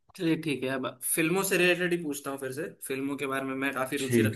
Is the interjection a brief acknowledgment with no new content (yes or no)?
yes